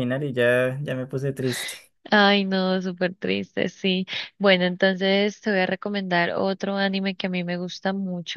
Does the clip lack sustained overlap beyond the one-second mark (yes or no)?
yes